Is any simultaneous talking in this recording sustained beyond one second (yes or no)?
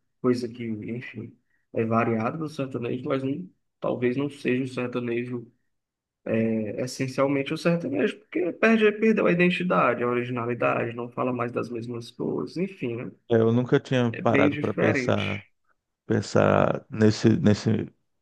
yes